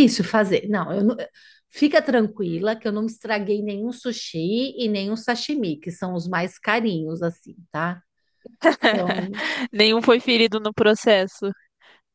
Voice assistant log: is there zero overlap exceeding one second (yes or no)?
yes